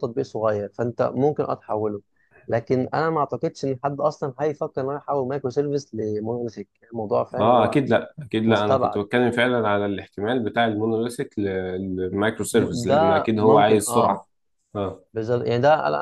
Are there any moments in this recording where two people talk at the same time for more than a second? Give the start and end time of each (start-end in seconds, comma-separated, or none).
12.5-14.2